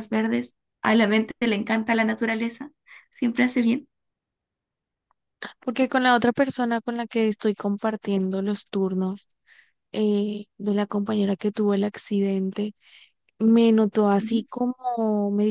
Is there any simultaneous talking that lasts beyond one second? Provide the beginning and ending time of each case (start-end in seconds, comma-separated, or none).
none